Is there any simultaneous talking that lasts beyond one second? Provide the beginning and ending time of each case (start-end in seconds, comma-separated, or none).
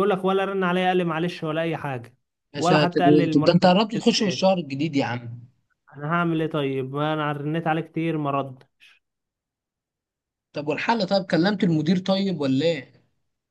2.6-4.5